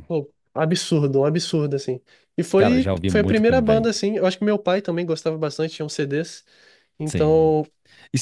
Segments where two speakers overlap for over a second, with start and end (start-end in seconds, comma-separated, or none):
2.5-3.9